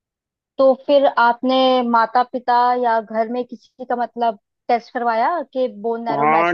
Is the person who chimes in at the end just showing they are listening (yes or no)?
no